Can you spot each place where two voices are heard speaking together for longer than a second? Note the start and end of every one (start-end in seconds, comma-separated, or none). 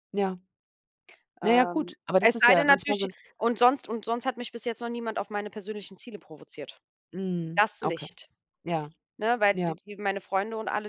1.4-3.1